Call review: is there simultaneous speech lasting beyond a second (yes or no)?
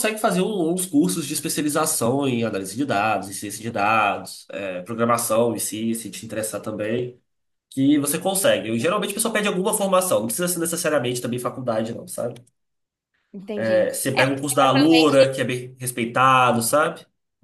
yes